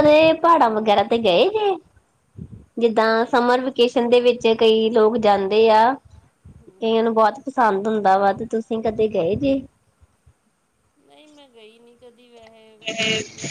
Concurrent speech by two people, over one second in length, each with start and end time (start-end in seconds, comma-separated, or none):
none